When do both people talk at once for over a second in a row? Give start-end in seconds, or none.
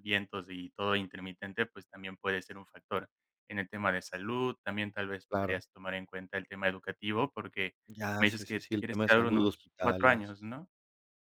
8.2-10.4